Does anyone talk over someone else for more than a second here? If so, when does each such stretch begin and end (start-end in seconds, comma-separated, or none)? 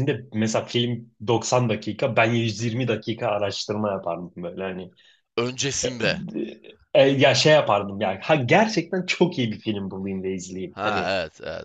none